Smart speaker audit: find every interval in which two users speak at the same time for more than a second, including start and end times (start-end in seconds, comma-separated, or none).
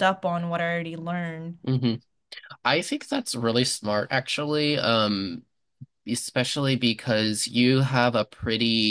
none